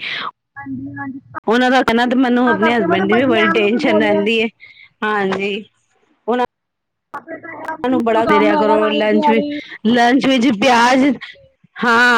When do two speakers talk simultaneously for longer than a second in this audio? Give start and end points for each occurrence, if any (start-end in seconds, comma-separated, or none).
2.5-4.2, 7.9-9.5